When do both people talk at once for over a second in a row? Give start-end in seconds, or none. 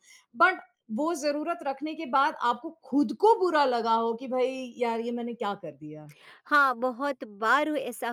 none